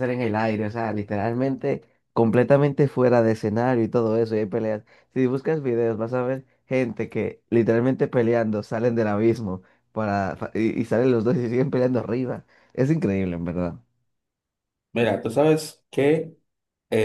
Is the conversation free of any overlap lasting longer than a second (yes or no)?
yes